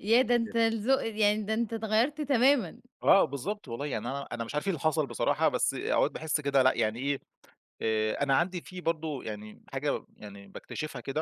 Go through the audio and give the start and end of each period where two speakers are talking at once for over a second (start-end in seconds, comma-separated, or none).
none